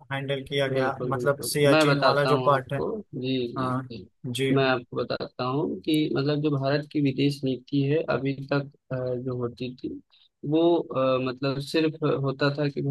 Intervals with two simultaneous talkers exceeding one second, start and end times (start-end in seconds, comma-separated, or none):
0.7-2.8